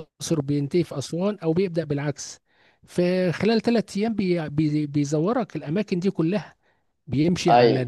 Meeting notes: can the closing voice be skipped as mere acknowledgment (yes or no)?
yes